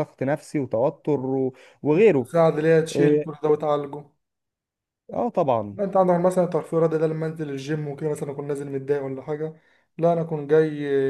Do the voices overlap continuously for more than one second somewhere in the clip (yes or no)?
no